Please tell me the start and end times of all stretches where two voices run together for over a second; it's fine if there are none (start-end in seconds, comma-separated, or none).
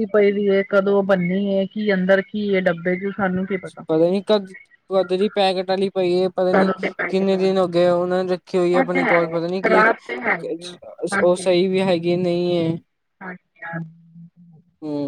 none